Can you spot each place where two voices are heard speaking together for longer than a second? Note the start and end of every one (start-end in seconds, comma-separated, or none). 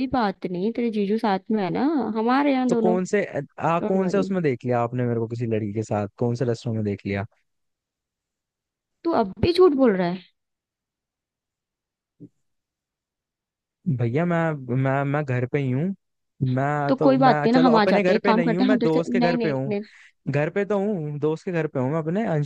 16.9-19.7